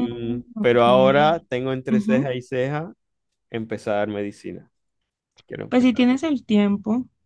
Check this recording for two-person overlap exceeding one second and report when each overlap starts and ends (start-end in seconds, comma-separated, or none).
none